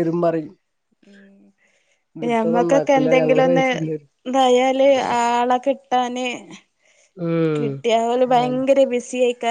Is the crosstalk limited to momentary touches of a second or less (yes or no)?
no